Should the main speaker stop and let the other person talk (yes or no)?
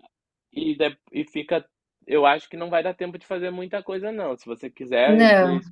no